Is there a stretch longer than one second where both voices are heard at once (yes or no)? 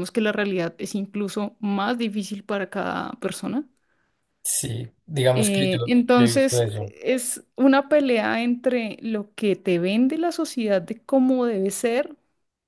yes